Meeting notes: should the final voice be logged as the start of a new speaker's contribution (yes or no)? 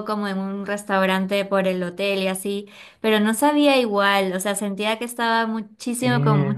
no